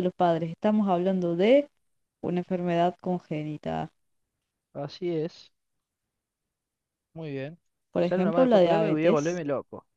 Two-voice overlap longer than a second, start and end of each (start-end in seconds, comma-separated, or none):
8.0-9.4